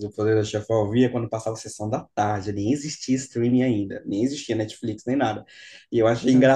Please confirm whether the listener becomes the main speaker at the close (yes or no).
no